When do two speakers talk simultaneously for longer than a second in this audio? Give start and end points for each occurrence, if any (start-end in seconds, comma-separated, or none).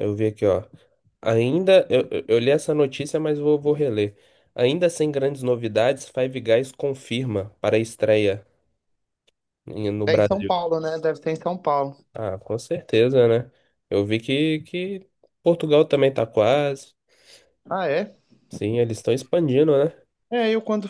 none